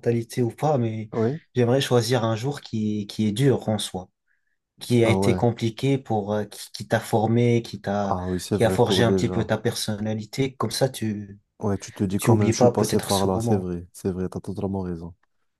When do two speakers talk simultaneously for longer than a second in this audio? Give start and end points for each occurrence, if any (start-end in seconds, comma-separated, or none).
8.1-9.5, 12.2-13.7